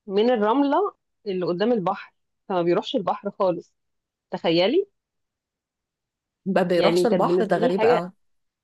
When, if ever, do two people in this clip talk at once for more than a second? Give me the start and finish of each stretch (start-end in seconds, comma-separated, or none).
6.7-8.1